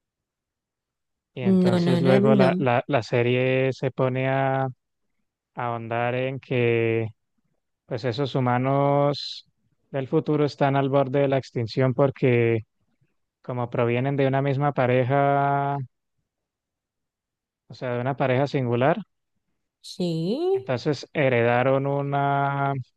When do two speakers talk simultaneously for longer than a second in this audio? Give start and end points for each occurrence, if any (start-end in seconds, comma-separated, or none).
1.4-2.6